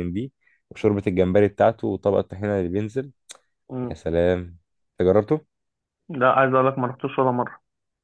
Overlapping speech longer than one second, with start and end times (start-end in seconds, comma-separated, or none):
none